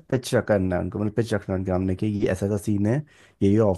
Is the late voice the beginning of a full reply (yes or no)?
no